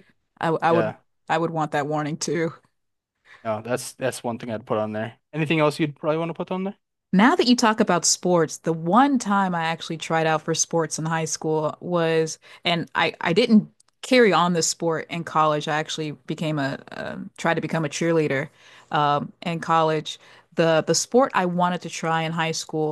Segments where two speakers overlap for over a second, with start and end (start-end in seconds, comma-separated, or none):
none